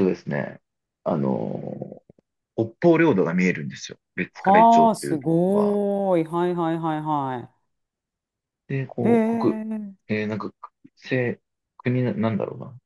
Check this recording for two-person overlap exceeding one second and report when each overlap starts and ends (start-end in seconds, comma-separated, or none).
4.3-5.8